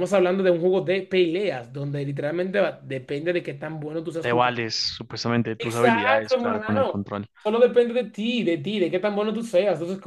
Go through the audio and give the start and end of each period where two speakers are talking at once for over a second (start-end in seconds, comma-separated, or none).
5.6-7.0